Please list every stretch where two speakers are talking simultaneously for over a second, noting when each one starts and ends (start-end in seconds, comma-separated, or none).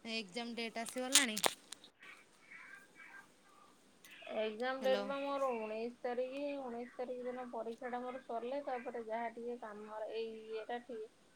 none